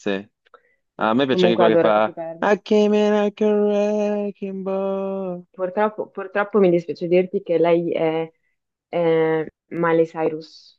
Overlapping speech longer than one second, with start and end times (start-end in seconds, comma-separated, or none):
1.0-2.5